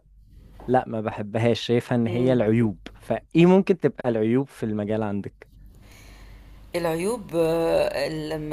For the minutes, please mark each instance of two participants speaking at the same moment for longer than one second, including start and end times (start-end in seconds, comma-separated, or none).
none